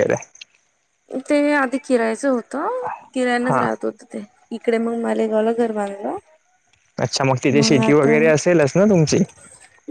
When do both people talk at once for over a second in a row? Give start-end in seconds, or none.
none